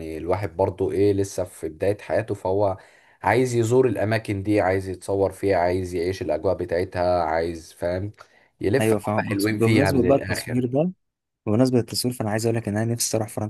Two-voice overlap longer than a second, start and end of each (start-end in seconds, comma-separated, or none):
8.8-10.7